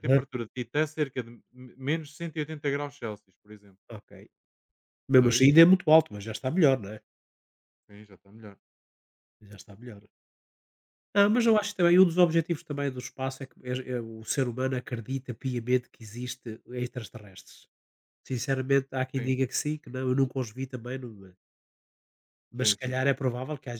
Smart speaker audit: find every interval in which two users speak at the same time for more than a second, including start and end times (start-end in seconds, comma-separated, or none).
none